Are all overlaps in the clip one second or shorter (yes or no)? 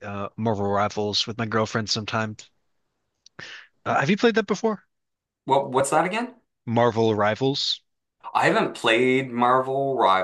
yes